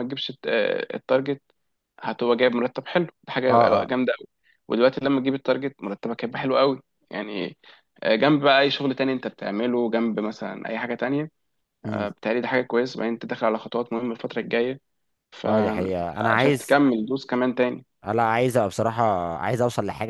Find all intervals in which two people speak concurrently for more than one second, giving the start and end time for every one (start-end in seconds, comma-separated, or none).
15.5-16.8